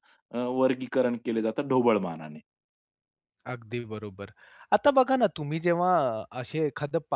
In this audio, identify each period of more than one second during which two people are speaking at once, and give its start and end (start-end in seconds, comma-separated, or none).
none